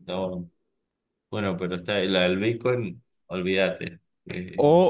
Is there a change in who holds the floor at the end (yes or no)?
yes